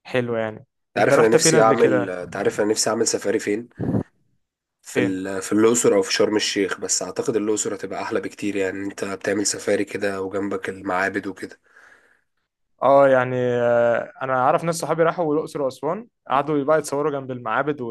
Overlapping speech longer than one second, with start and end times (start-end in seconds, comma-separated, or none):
0.9-2.1